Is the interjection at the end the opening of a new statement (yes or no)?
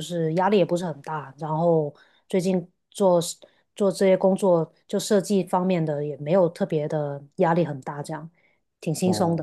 yes